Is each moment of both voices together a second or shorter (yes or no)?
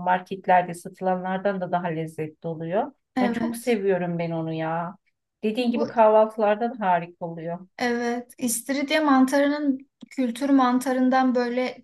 yes